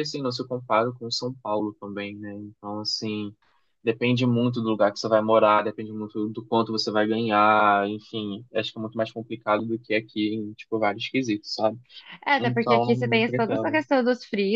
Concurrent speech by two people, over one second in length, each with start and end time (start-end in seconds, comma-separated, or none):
12.4-13.8